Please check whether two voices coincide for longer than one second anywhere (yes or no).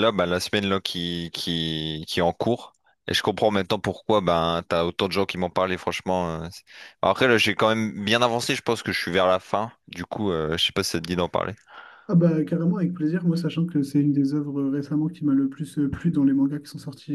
no